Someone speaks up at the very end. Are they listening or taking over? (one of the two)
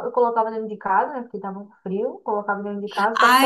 taking over